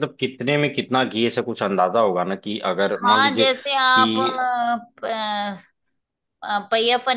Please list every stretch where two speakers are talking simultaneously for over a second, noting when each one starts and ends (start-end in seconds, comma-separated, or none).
3.0-4.4